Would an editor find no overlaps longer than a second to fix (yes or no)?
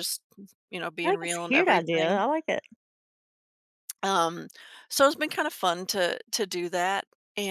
no